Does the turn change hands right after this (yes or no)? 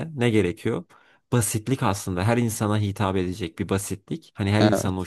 no